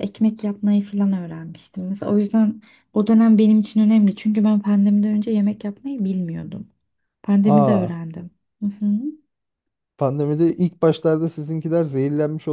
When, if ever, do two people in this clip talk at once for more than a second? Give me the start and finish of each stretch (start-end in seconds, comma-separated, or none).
none